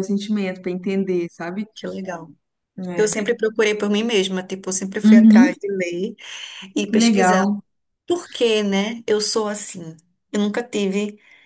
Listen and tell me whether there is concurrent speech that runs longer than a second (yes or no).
no